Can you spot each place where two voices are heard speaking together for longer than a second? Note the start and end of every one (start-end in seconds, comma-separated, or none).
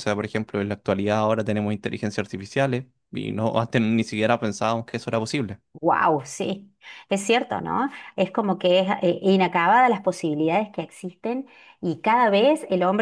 none